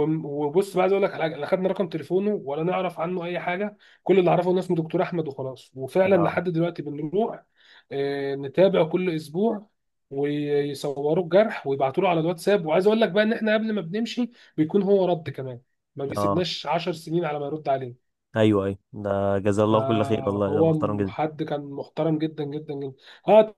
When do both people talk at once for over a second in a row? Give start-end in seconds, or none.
19.7-21.1